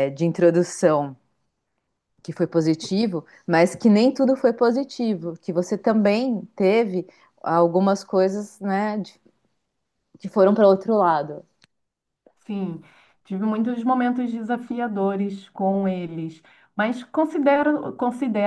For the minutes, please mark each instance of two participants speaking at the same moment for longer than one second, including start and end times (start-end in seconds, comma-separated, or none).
none